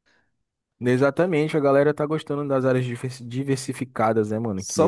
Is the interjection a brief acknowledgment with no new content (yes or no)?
no